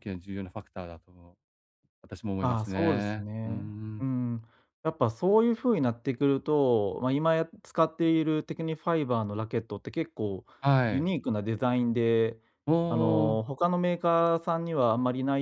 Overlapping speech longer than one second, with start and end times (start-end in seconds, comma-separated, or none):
2.4-4.1